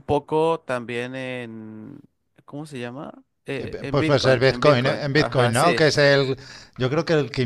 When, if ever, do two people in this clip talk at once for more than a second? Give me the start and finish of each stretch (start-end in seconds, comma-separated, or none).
3.6-5.8